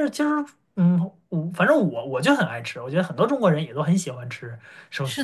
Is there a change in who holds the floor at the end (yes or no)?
yes